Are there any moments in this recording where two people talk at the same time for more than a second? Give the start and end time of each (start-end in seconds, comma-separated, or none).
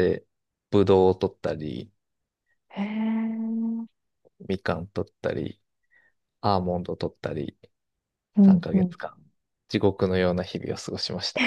none